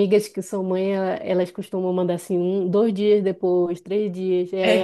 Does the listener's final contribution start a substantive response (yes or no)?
no